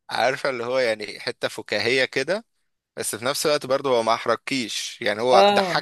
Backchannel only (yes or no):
yes